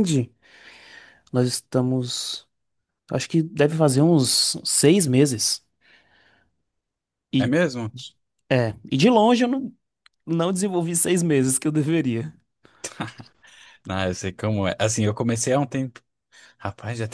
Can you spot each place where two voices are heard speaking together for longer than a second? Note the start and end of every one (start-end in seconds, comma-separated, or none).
none